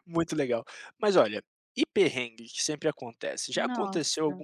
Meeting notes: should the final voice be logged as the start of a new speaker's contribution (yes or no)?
no